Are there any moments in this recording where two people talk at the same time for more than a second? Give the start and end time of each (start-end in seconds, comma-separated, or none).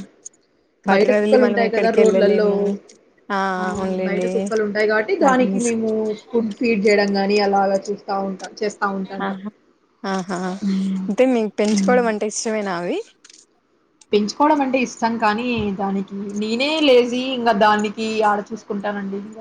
0.9-2.5